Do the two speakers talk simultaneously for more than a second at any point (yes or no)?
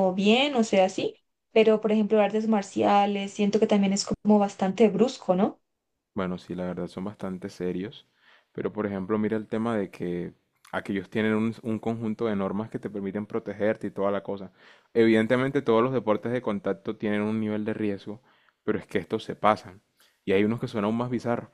no